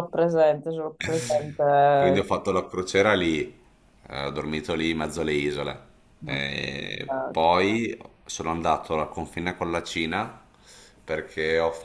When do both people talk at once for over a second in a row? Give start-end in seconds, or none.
none